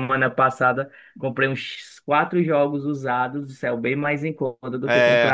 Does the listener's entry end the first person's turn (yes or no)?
no